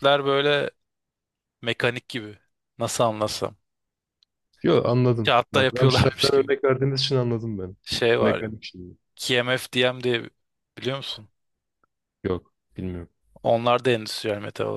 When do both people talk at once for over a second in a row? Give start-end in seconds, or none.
5.2-6.5